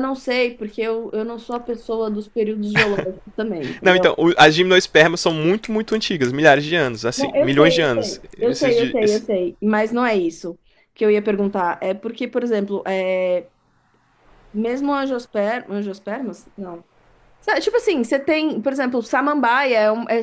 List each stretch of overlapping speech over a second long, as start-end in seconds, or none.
7.2-9.2